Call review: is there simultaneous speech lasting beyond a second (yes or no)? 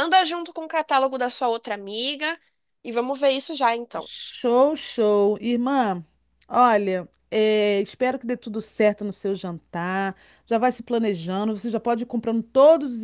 no